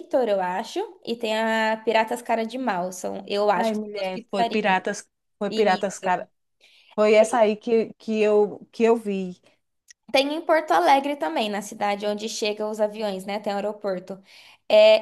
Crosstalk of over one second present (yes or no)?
yes